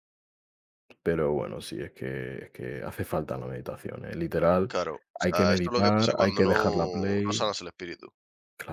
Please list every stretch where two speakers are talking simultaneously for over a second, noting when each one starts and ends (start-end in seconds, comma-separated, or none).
5.2-7.5